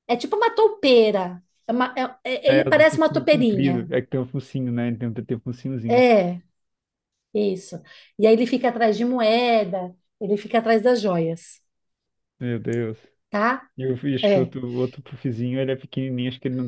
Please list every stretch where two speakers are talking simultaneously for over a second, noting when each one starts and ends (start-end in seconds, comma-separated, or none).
2.5-3.9